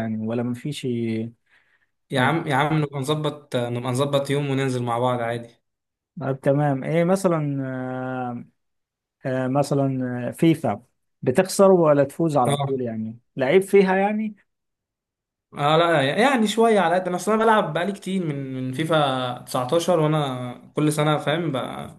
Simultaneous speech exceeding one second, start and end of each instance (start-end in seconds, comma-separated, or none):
none